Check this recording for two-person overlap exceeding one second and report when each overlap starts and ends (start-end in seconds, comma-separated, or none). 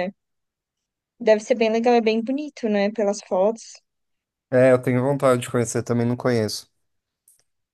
none